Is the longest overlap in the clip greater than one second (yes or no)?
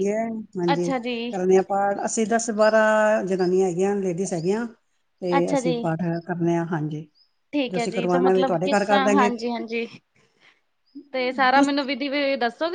yes